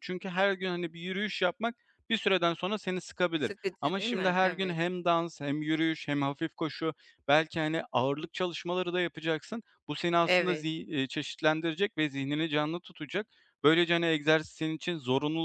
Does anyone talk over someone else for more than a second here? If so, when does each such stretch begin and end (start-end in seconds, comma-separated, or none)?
3.4-4.8